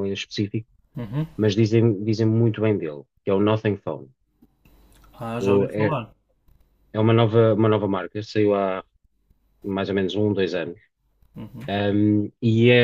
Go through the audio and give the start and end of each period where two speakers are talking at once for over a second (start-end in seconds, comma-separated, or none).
none